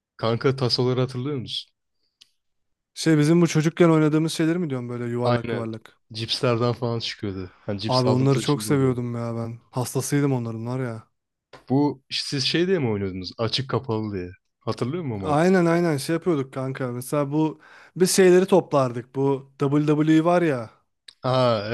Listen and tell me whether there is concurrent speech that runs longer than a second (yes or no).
yes